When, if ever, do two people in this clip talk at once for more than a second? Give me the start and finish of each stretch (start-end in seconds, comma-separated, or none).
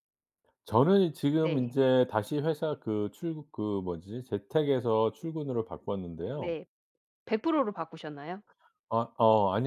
none